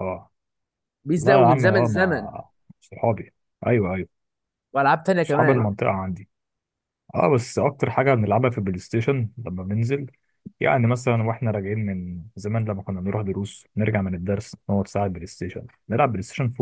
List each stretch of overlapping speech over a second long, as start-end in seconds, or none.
1.2-2.4